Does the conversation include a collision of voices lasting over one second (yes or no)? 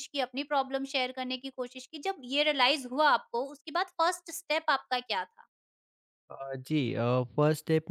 no